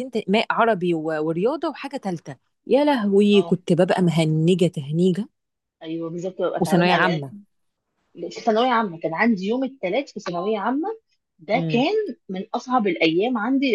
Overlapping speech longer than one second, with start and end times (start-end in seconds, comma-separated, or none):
none